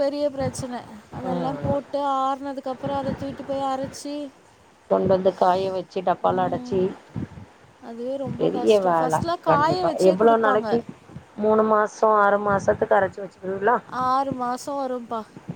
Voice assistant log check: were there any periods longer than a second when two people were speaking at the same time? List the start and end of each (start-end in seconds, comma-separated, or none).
8.4-10.7